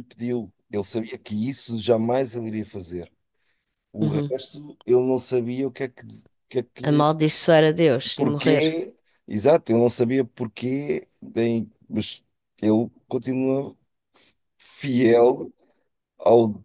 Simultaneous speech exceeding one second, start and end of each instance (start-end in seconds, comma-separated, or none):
none